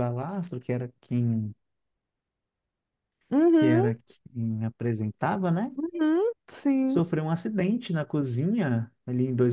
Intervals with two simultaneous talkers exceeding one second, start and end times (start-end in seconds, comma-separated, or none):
none